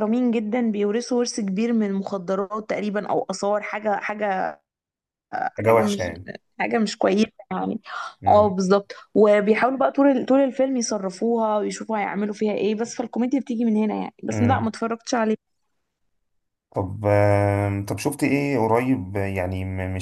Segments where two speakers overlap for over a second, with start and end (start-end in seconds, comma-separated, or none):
none